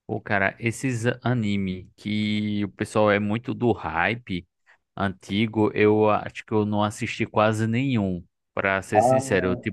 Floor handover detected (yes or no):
no